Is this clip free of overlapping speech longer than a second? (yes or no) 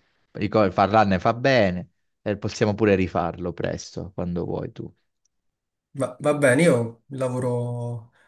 yes